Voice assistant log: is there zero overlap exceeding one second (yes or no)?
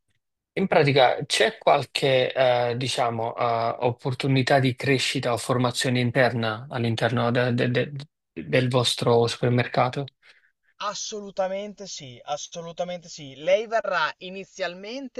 yes